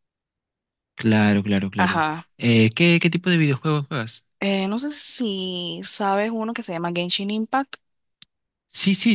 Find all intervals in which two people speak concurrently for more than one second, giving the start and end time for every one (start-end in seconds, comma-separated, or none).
none